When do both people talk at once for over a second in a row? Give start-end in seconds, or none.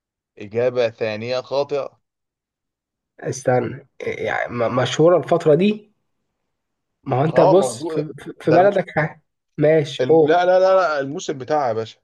7.3-8.7